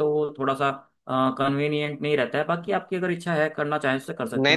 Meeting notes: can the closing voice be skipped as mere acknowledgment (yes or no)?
no